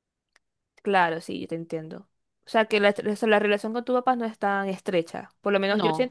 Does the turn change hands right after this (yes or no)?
no